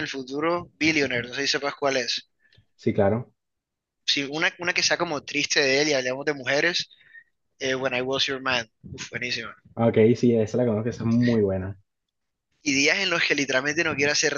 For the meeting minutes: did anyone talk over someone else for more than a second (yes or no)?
no